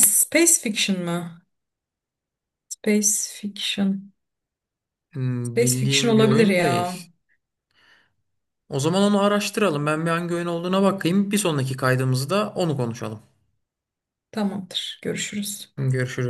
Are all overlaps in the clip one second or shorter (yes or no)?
no